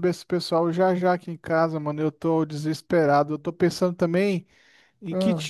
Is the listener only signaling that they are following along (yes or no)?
yes